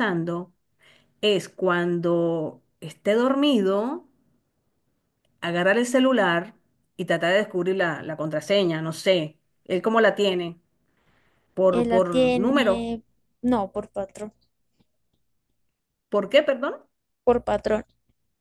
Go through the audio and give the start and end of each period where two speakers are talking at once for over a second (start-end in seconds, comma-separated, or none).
11.7-12.9